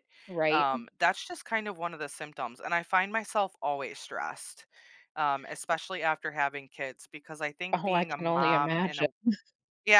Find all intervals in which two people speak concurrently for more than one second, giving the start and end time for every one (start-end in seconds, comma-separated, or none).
7.7-9.1